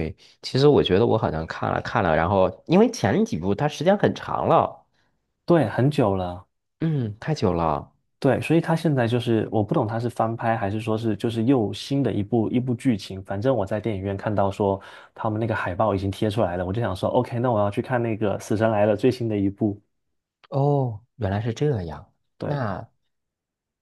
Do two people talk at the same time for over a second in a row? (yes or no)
no